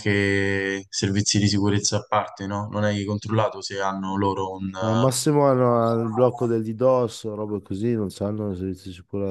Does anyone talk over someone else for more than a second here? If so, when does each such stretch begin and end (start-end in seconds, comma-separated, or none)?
none